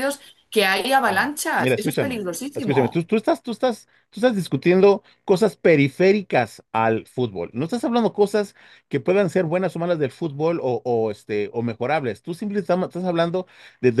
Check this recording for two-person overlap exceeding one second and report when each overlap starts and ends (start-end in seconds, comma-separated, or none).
1.1-3.0